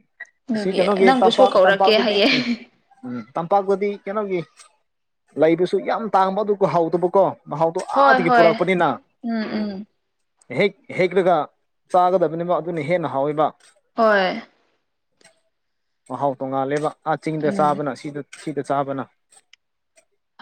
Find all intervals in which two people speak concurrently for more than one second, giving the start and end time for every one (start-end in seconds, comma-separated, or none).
0.6-2.3